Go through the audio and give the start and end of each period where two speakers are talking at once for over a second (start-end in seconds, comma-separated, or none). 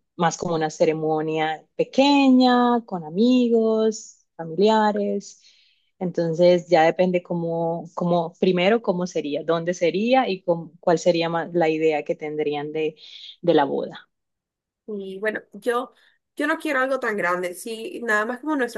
none